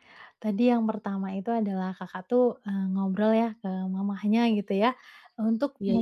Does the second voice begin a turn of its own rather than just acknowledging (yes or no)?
no